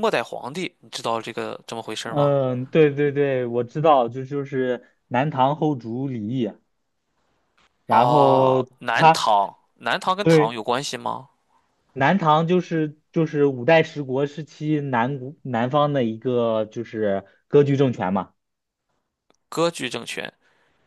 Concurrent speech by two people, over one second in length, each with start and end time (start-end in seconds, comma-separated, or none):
7.9-9.3